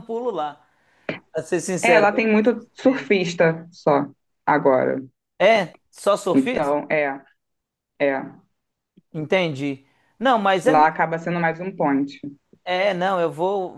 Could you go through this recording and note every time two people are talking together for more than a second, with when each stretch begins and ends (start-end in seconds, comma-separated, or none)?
1.8-3.1